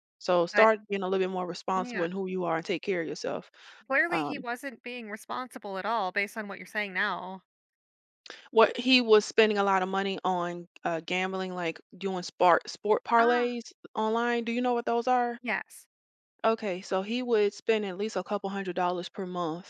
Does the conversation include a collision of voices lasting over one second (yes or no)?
no